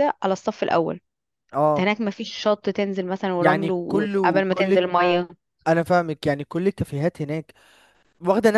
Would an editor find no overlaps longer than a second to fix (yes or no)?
no